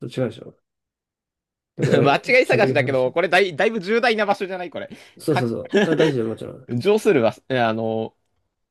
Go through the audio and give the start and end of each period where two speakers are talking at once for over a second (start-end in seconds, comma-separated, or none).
1.8-3.2